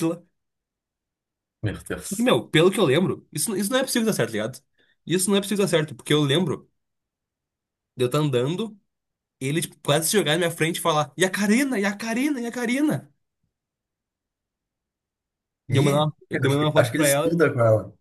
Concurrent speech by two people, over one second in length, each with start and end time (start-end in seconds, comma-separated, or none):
15.7-17.4